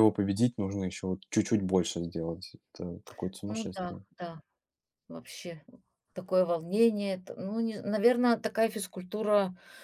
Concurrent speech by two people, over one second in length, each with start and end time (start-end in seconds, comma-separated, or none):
none